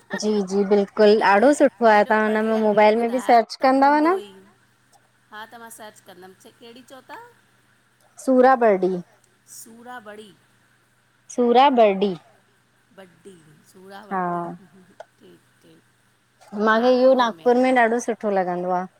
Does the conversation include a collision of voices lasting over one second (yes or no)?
yes